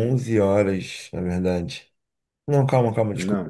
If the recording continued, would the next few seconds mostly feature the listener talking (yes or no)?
no